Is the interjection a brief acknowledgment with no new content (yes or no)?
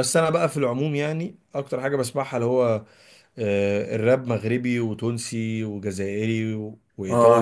no